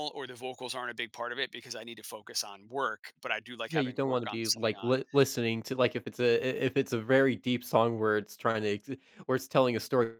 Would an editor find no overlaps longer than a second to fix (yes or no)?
no